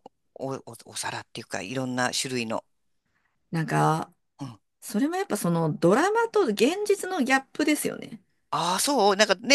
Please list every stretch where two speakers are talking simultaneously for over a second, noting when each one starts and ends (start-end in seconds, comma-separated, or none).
none